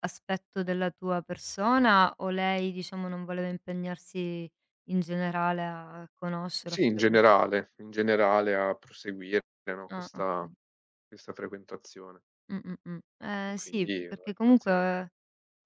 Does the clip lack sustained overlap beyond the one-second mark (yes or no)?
no